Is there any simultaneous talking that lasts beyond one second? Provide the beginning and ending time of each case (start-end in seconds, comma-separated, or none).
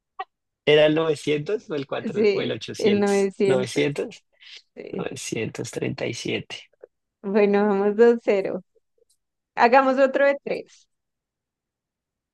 2.1-3.9